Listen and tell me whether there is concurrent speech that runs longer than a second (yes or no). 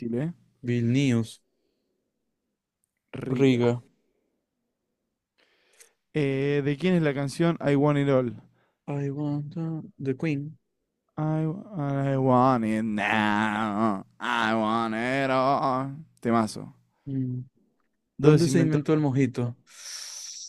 yes